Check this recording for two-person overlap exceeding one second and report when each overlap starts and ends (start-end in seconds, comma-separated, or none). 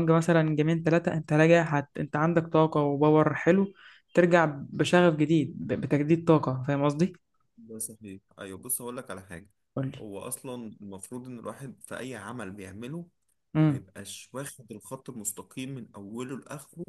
none